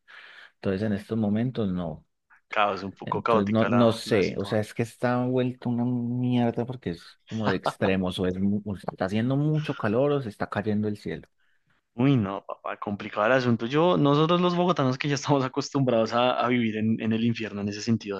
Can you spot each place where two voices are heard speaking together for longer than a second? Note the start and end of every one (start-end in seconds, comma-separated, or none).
3.0-4.6